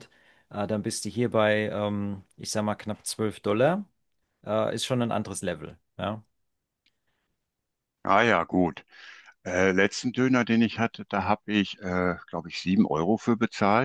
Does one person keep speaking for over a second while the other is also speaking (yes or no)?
no